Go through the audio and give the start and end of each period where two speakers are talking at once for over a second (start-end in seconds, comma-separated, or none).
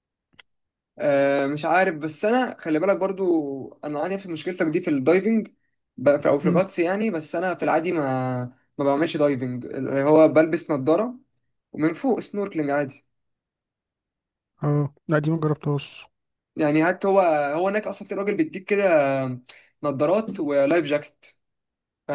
none